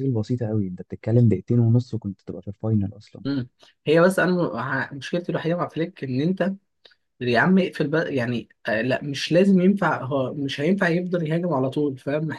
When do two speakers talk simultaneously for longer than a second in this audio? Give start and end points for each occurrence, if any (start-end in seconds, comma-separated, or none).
none